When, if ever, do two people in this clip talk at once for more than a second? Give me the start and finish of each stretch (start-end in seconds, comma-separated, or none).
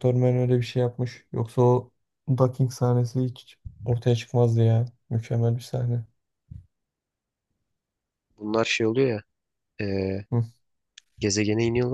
none